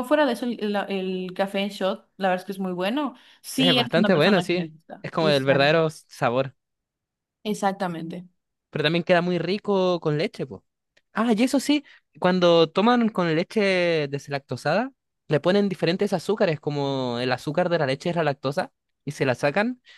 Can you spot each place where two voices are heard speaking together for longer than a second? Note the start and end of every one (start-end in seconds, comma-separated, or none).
3.6-5.8